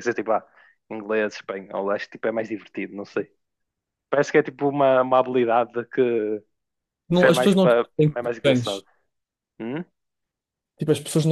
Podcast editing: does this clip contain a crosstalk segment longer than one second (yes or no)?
yes